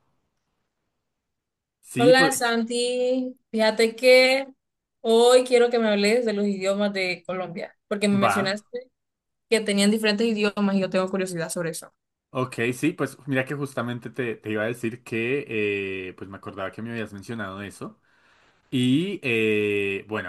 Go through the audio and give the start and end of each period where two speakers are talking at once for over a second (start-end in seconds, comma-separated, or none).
none